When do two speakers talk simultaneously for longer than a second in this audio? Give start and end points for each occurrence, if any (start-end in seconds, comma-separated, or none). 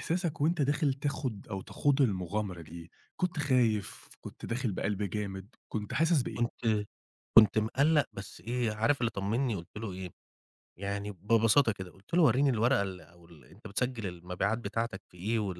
none